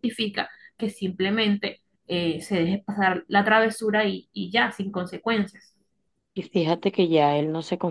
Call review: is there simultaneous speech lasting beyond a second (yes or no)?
no